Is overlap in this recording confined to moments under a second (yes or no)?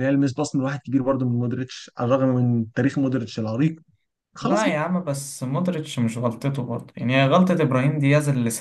yes